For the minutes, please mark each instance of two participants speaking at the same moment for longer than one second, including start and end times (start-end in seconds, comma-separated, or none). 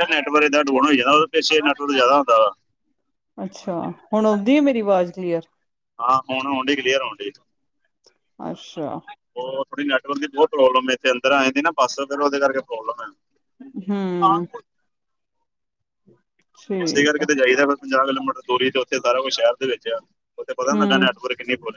none